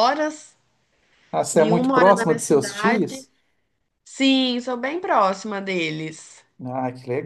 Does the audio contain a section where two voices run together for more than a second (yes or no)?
yes